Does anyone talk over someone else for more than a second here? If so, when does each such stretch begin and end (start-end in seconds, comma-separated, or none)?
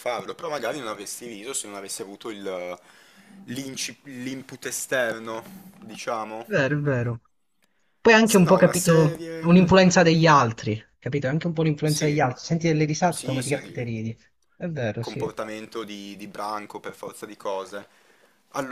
8.2-10.0